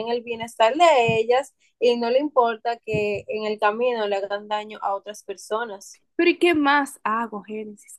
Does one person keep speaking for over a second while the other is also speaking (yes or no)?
no